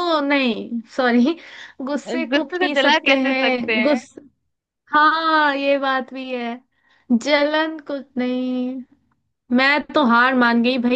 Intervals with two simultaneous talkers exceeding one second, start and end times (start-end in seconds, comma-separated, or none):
2.3-4.0